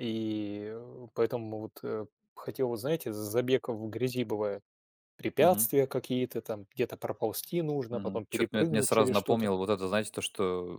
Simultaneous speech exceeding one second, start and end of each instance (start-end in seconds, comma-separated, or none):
7.9-9.5